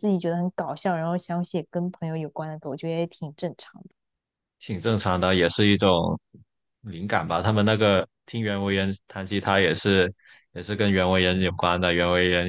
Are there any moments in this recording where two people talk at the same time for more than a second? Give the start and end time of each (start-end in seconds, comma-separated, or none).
none